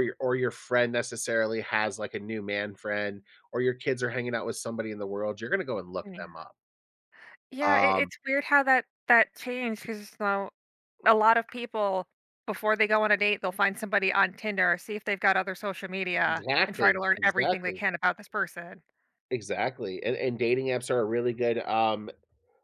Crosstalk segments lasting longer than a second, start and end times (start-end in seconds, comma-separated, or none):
16.3-17.8